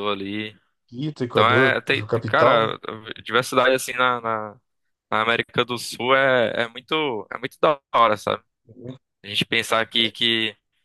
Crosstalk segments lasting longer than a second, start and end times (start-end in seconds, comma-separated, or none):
1.3-2.7